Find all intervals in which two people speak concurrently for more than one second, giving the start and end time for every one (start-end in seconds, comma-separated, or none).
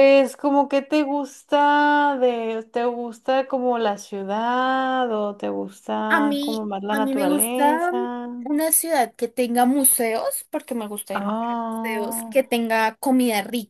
6.1-7.9, 11.1-12.3